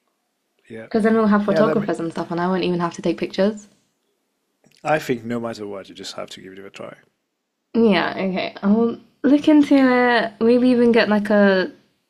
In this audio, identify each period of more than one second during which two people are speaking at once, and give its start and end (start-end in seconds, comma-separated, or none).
none